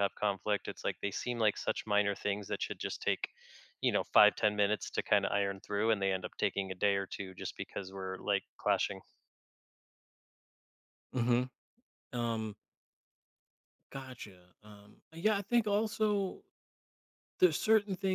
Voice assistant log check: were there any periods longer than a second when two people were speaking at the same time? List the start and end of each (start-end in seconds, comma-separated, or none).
none